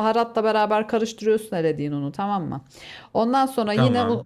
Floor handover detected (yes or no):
no